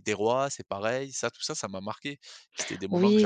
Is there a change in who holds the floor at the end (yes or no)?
yes